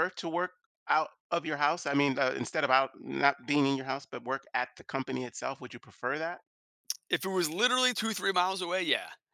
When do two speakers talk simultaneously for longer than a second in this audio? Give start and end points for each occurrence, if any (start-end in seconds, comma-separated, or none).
none